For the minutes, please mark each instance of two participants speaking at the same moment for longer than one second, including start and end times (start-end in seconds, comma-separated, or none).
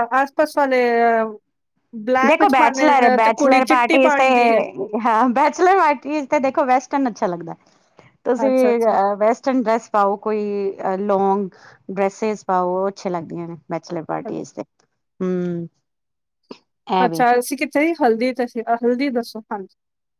none